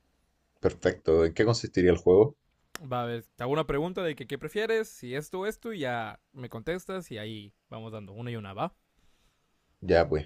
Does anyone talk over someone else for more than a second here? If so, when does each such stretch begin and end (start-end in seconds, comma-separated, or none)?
none